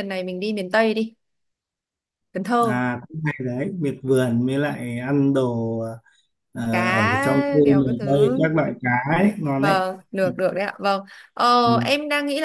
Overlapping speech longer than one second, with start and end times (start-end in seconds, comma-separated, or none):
6.7-8.4